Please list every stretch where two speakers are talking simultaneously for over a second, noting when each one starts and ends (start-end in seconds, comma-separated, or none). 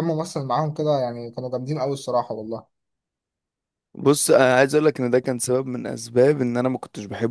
none